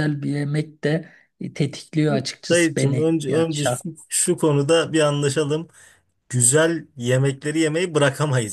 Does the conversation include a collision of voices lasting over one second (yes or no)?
yes